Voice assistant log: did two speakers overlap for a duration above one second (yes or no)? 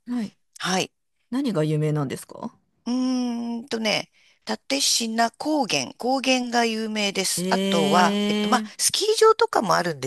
yes